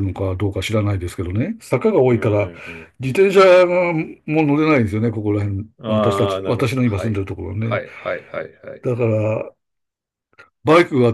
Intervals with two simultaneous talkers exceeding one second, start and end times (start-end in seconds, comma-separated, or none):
5.8-7.8